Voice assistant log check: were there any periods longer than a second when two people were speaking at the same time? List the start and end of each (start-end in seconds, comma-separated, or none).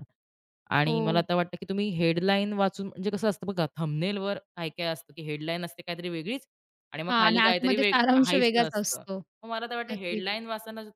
7.1-9.0